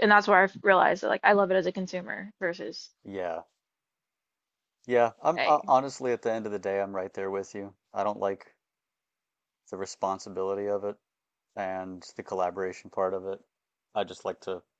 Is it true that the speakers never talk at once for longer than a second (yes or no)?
yes